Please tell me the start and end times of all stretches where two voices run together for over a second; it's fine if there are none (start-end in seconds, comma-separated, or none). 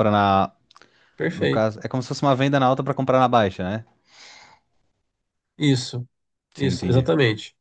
none